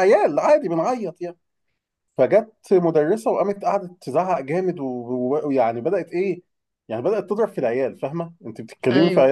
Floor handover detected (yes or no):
no